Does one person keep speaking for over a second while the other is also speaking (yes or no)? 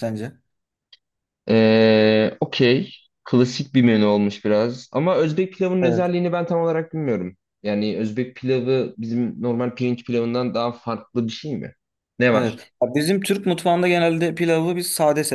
no